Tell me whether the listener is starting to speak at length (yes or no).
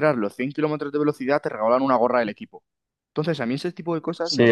yes